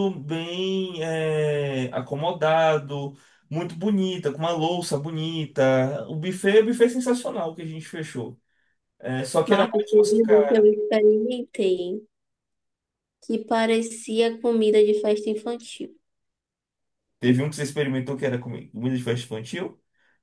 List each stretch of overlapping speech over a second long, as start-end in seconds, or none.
9.5-10.7